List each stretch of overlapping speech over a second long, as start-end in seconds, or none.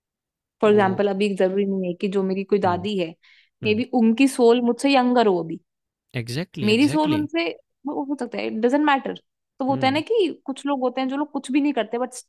none